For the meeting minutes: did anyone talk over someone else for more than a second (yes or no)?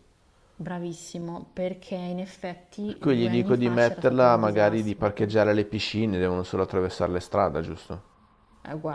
yes